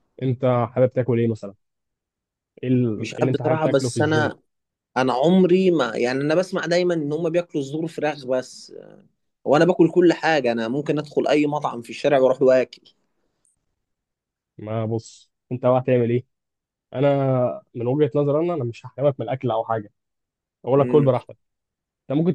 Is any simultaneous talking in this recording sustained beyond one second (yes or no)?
yes